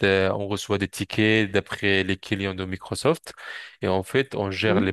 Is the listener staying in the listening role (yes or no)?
yes